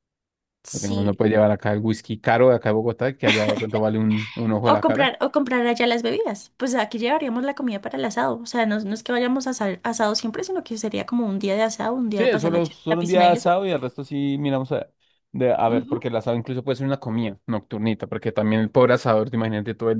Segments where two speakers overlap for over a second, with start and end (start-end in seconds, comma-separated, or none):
12.1-13.5